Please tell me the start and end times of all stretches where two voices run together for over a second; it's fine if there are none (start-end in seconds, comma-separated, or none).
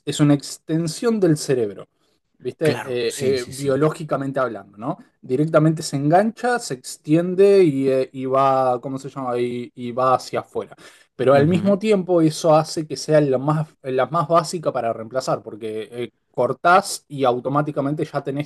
2.6-3.9